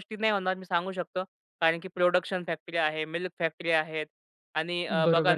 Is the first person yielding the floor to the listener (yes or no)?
yes